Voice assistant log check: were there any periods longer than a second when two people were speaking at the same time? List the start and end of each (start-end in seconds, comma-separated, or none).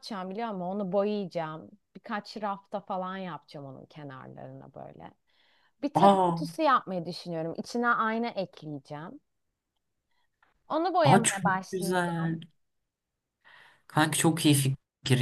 11.0-12.4